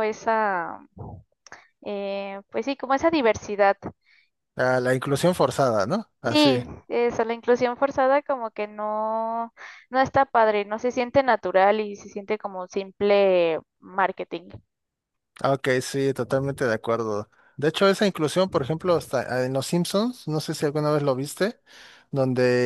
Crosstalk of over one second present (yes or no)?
no